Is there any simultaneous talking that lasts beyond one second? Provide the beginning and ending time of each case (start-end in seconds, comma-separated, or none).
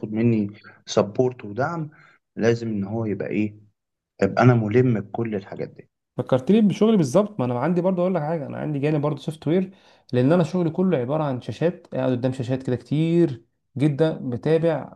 none